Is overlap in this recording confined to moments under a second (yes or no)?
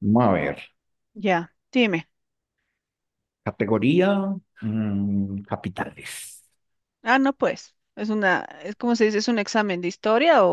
yes